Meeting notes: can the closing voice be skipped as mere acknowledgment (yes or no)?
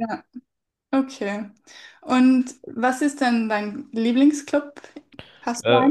no